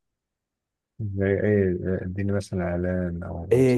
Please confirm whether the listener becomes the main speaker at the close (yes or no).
yes